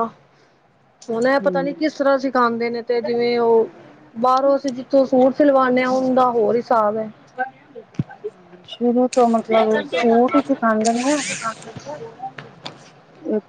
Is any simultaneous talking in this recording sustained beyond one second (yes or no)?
no